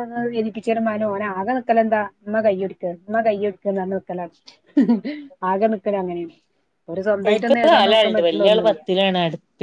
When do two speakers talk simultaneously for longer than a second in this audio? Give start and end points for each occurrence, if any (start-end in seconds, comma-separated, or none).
7.3-8.8